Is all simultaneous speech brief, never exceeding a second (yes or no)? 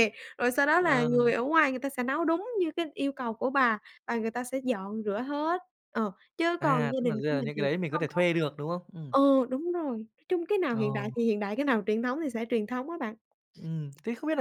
no